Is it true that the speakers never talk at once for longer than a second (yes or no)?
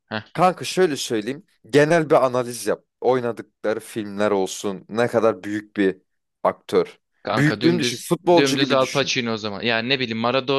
no